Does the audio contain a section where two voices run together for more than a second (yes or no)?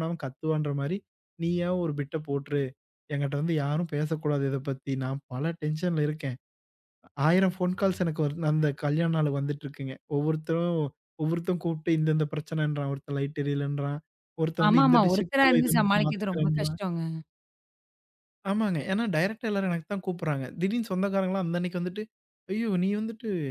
yes